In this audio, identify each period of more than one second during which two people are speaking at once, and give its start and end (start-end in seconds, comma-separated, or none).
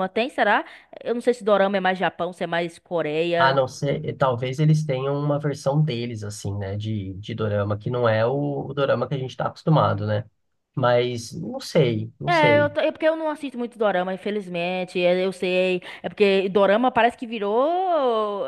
none